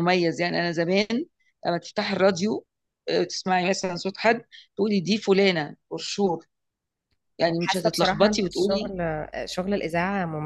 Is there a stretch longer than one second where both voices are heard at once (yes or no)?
yes